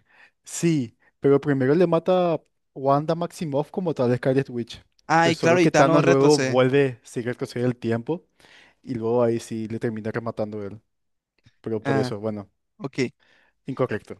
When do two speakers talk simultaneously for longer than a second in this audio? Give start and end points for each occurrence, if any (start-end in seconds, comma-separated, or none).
5.2-6.6